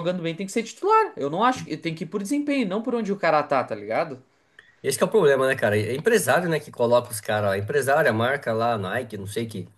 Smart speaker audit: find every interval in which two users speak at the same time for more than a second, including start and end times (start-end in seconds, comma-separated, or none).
none